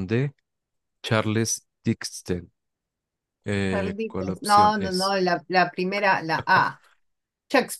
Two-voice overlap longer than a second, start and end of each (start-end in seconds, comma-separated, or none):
3.7-5.1